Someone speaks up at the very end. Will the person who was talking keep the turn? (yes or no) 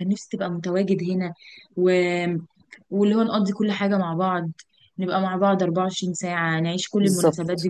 yes